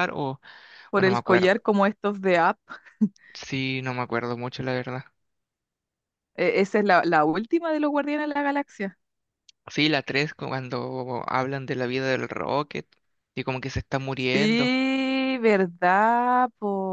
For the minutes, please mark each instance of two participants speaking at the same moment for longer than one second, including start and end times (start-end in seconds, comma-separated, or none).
none